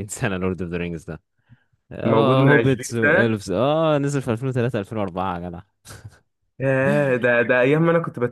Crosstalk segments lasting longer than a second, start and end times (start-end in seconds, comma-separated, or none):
2.0-3.4